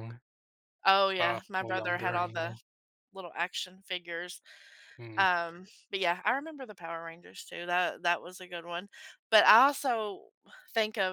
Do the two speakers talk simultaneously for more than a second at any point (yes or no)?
yes